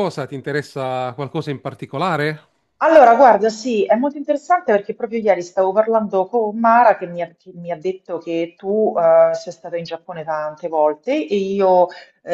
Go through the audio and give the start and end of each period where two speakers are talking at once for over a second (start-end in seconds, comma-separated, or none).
none